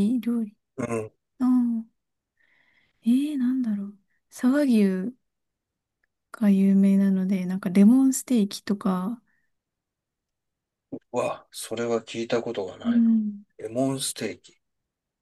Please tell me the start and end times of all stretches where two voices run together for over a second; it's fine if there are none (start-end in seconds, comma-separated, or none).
none